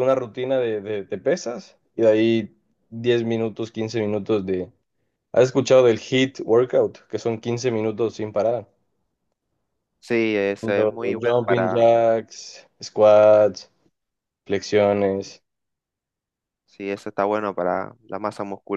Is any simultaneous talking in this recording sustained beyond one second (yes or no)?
yes